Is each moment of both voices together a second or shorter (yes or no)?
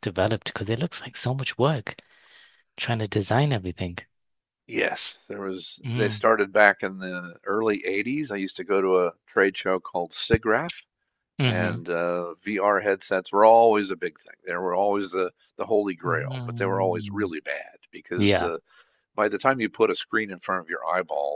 no